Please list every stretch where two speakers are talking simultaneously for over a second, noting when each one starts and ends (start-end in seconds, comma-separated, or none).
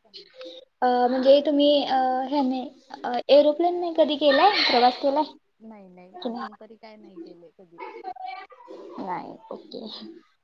none